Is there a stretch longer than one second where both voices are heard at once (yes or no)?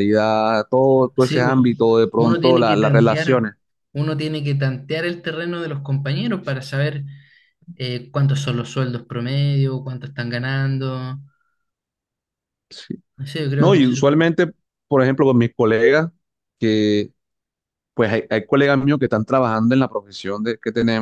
yes